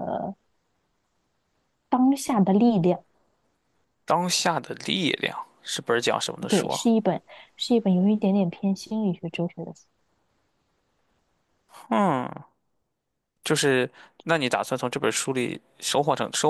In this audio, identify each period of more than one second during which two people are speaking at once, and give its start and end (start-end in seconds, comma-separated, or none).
none